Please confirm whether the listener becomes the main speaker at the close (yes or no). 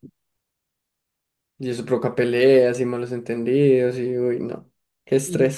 yes